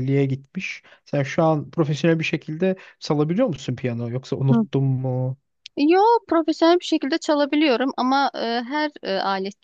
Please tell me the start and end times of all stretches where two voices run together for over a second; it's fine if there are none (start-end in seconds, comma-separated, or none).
none